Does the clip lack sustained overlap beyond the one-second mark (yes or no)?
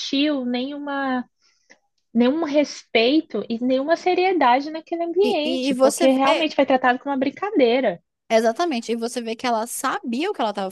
no